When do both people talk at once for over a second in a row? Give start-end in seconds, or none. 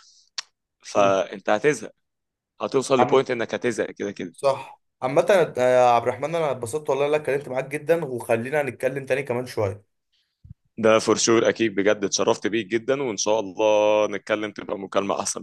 none